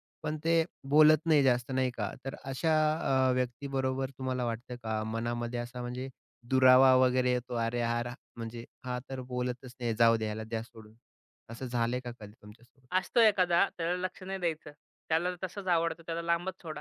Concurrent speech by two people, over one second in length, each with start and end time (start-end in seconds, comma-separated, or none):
none